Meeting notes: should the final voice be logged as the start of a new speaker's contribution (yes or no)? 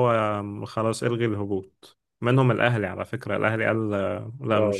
yes